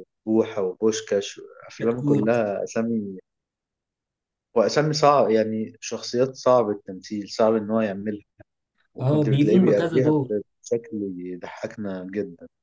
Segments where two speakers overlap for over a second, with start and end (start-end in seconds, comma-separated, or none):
9.0-10.4